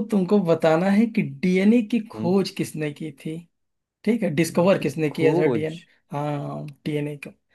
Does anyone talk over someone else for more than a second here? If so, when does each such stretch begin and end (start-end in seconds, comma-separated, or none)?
4.5-5.8